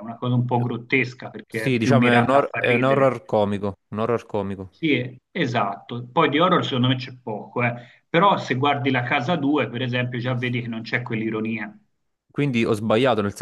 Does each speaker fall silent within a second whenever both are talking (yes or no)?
no